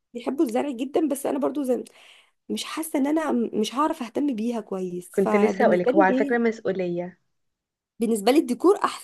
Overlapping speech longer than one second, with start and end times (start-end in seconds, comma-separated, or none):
5.1-6.4